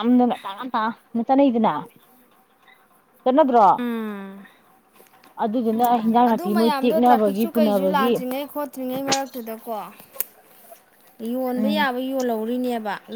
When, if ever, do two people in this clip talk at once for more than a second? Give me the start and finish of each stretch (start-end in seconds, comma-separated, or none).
6.3-8.1